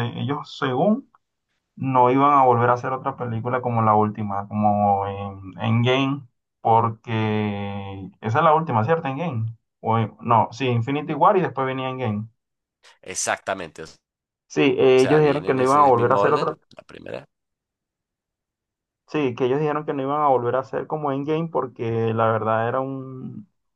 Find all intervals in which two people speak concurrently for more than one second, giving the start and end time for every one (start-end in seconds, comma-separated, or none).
14.9-16.6